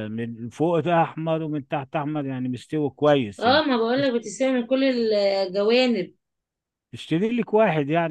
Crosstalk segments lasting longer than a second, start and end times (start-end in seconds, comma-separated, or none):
none